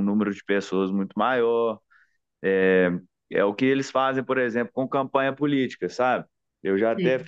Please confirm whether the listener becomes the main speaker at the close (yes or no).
no